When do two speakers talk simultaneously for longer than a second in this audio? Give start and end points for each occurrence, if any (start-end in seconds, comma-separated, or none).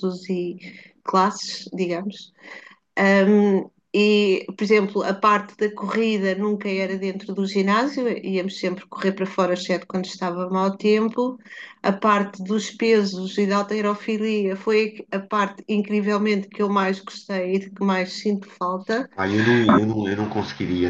none